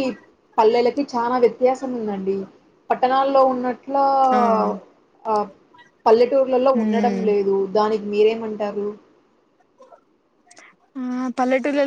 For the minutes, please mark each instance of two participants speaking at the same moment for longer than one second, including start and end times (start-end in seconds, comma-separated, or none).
none